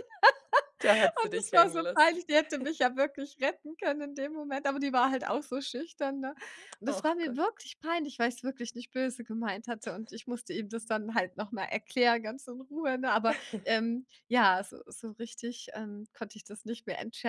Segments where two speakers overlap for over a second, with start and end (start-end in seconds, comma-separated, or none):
0.8-2.2